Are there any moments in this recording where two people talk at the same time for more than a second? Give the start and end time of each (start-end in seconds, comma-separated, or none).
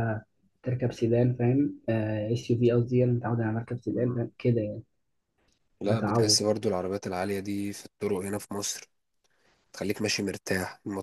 none